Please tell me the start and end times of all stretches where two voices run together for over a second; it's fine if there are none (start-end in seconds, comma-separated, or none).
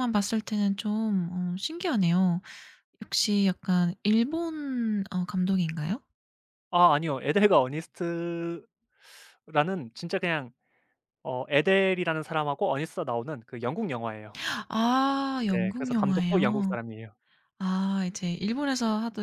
15.5-16.8